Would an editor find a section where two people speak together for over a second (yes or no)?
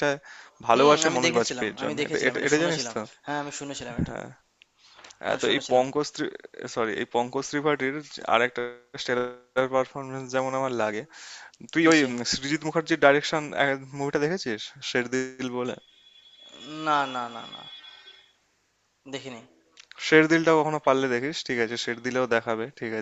yes